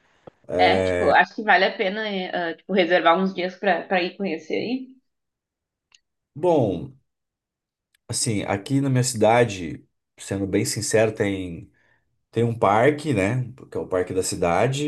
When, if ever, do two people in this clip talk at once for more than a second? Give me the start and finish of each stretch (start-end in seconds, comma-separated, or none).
none